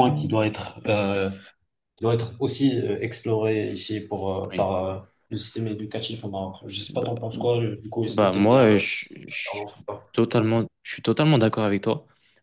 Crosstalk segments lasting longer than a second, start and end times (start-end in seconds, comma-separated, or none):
8.1-9.7